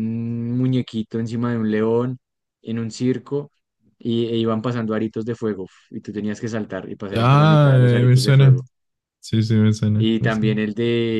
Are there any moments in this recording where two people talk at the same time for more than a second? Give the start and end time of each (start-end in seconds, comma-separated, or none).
7.2-8.6